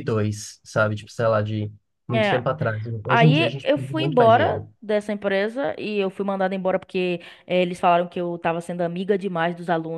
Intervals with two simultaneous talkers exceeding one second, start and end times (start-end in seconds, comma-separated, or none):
3.1-4.7